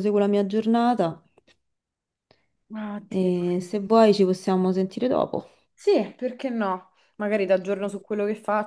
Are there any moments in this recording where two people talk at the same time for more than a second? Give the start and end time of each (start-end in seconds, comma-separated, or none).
none